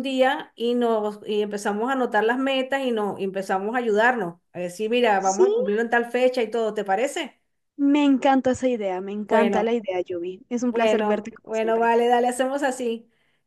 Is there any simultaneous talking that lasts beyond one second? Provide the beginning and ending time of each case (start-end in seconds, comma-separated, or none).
10.7-11.9